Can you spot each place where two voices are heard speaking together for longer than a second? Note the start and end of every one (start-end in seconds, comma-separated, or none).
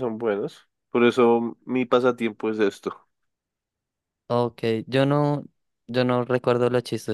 none